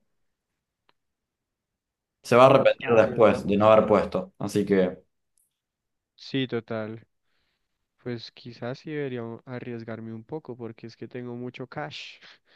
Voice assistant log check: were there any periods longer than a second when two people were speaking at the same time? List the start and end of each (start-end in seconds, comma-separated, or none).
2.4-3.9